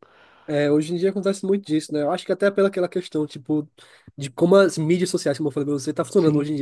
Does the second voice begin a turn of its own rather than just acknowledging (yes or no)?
no